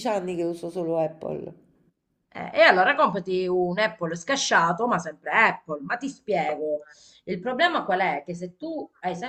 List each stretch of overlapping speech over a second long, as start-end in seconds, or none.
none